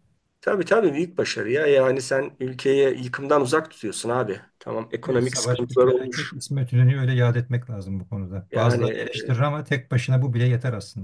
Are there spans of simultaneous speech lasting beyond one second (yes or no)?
yes